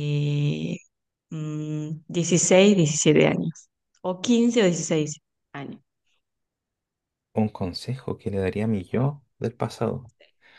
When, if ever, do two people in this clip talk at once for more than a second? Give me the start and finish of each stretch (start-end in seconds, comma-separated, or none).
none